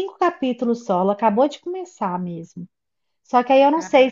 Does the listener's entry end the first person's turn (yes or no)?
no